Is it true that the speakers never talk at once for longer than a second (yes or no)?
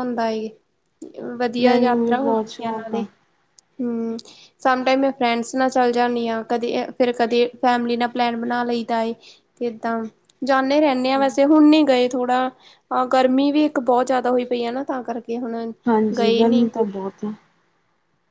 no